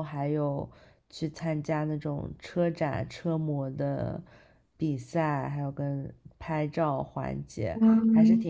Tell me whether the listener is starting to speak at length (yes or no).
no